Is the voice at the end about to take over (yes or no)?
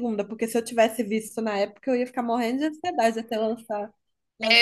yes